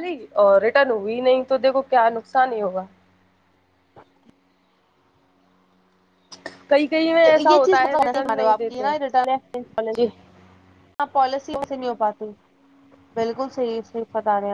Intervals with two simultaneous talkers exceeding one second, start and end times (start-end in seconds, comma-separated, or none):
7.4-8.9